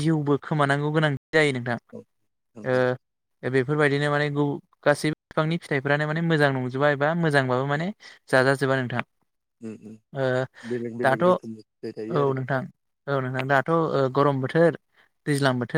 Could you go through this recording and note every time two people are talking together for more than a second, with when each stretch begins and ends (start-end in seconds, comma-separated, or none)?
11.1-12.5